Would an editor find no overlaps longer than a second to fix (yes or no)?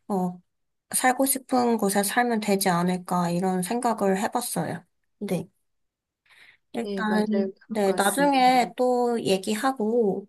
no